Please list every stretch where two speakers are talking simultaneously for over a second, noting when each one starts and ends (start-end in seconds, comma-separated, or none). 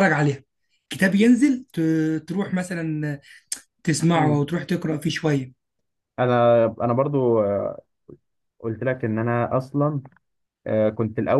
none